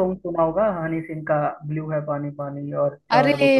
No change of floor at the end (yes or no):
no